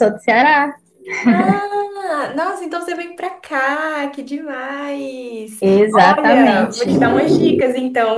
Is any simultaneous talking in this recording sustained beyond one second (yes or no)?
yes